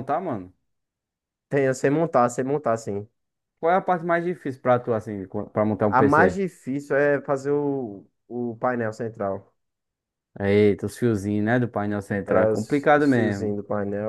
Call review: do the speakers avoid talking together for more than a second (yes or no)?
no